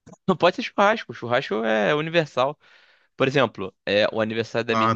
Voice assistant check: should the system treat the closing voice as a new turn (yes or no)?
no